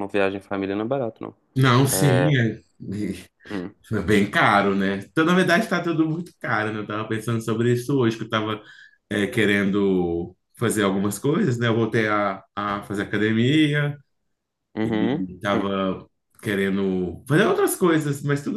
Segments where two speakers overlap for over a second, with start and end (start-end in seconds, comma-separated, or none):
none